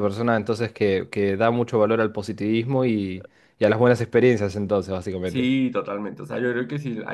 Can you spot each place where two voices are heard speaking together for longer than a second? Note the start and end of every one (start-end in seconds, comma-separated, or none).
none